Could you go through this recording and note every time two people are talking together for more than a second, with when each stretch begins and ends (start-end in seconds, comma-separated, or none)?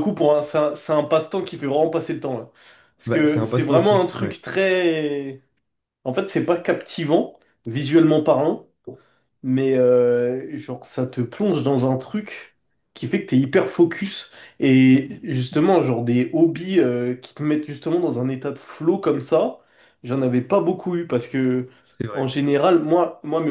3.1-4.4